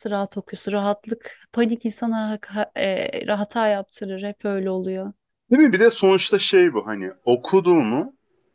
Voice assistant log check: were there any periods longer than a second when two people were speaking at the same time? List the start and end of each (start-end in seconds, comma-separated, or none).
none